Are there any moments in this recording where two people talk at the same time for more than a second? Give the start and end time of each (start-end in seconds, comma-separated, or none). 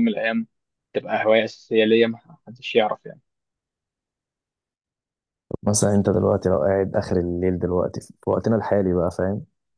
none